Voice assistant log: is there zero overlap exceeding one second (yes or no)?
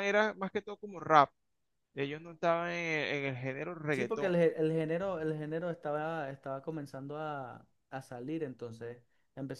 yes